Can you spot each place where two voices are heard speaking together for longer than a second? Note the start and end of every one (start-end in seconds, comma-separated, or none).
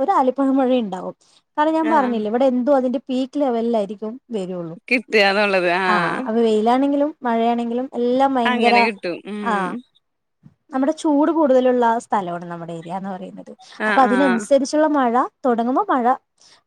none